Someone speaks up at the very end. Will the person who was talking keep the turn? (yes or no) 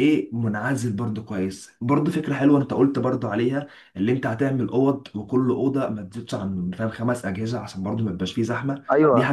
no